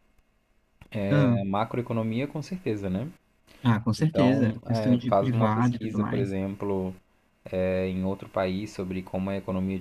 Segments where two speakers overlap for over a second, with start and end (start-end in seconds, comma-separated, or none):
4.0-6.4